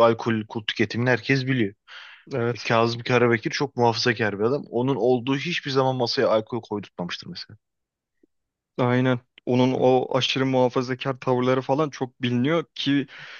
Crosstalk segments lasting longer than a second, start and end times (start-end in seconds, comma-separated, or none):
none